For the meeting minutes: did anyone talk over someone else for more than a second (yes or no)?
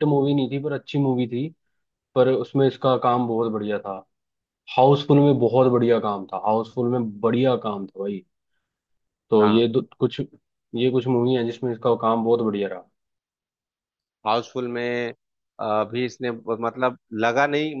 no